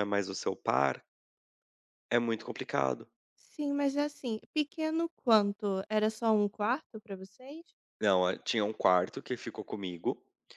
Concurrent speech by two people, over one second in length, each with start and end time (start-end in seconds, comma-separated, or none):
none